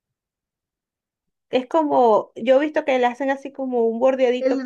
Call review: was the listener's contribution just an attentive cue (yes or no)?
no